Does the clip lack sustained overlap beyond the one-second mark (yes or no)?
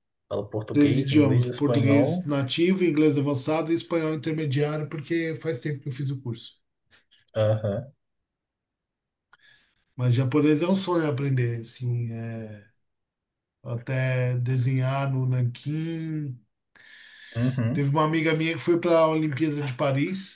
no